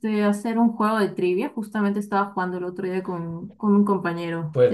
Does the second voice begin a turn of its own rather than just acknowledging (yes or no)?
yes